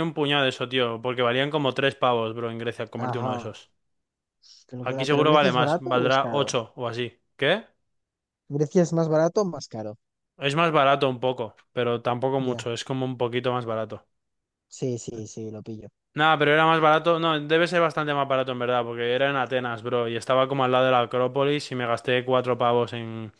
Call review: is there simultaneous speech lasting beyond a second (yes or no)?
yes